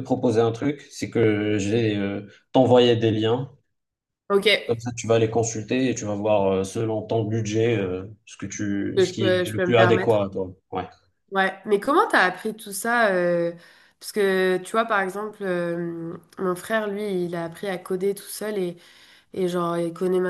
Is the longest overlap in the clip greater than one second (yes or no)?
yes